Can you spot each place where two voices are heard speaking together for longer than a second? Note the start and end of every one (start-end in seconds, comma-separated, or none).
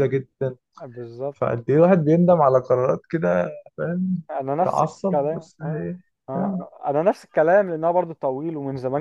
4.6-5.9